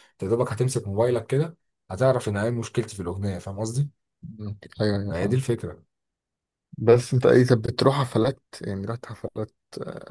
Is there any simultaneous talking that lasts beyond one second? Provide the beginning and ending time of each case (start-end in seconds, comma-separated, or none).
none